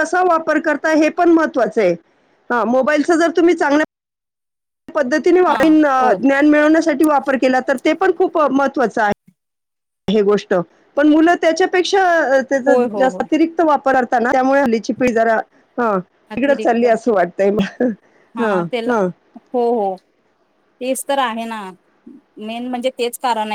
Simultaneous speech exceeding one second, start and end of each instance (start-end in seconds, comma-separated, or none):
none